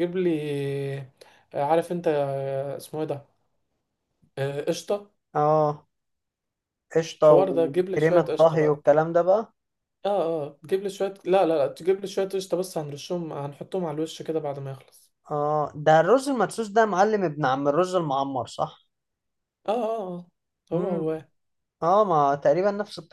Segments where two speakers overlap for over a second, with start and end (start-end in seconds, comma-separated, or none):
7.2-8.8